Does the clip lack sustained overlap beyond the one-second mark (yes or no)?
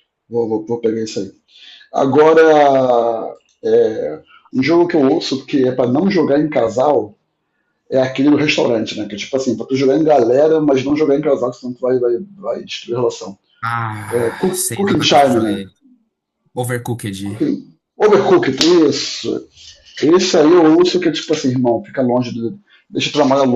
no